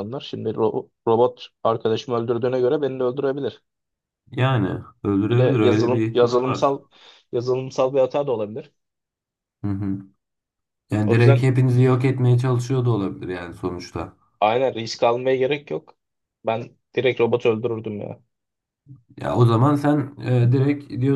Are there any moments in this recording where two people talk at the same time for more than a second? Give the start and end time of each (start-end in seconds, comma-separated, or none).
5.3-6.8